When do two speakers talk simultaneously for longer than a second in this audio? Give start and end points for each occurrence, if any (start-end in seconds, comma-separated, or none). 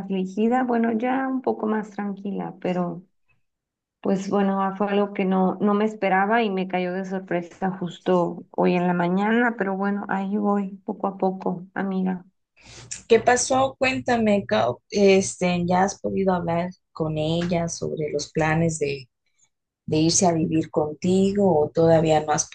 none